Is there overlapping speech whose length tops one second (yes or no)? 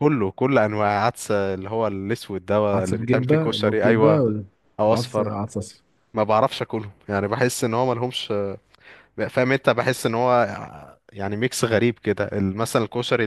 yes